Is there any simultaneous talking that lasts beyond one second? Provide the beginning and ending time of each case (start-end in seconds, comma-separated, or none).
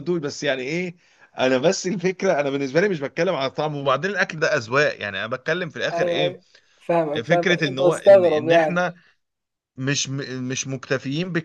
7.2-8.8